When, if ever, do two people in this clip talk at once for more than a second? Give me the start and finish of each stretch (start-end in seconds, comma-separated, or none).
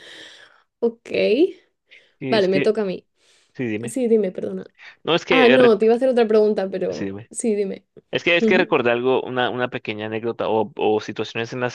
none